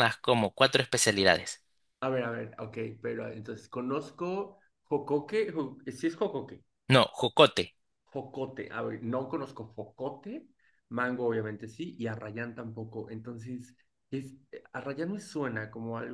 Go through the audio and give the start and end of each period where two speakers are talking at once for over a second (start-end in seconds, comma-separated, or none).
none